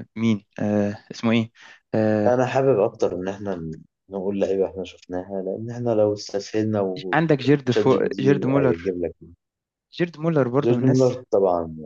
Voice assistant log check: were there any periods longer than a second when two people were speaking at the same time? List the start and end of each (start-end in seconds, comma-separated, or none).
7.1-8.9